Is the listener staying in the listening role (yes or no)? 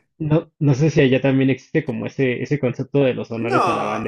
no